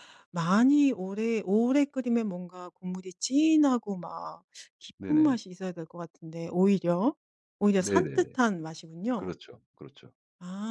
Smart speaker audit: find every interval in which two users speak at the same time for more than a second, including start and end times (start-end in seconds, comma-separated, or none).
none